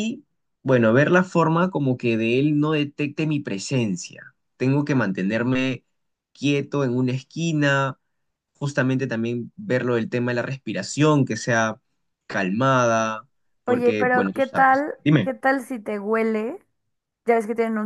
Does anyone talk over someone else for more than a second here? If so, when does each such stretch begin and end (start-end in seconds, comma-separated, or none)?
13.7-15.3